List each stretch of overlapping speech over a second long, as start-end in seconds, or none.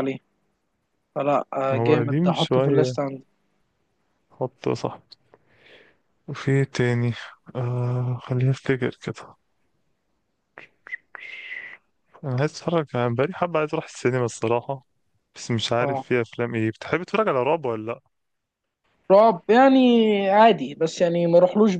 1.7-3.0